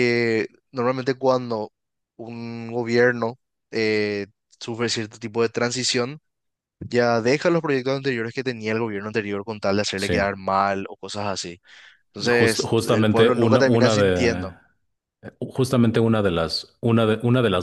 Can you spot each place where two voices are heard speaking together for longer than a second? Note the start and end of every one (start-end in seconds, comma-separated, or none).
12.2-14.5